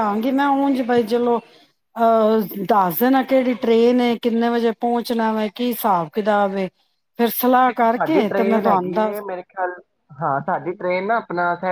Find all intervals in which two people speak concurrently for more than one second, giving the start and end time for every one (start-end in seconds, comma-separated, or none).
7.7-9.2